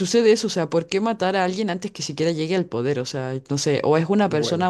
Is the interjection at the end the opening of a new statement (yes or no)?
no